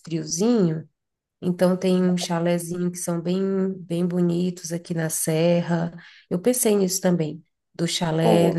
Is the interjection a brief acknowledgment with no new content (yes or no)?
yes